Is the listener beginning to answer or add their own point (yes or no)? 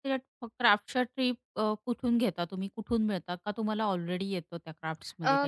yes